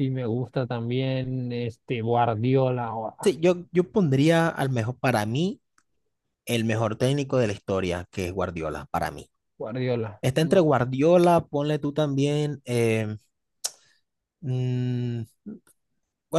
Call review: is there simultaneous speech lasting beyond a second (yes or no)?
no